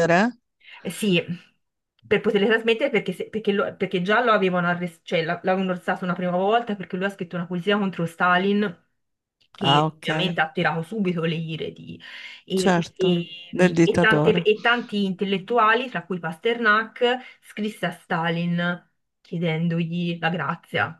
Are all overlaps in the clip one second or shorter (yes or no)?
no